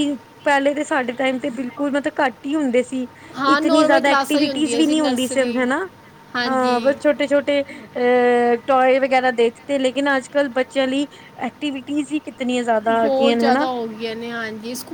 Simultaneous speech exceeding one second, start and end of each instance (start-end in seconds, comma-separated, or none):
3.5-5.6